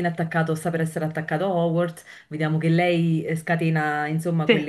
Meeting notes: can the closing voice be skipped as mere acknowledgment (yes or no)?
yes